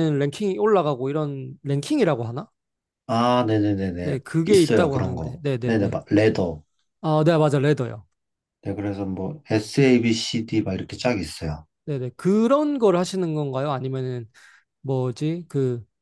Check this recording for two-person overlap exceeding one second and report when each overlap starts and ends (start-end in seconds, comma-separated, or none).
4.0-6.0